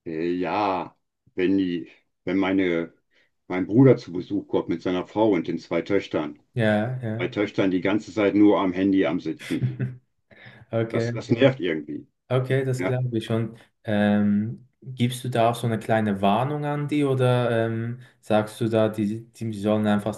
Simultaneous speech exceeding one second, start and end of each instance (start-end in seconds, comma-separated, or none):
none